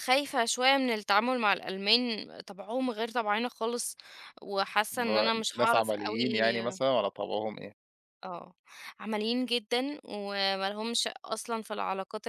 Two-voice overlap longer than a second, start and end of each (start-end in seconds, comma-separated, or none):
4.9-6.8